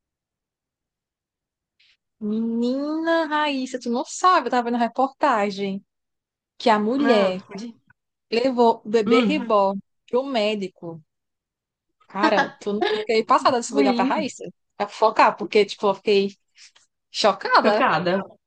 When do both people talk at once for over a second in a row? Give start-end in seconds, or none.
none